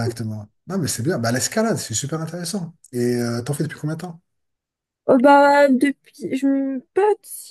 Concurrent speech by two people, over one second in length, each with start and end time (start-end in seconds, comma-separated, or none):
none